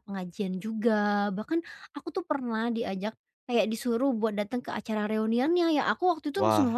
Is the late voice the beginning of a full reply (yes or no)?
no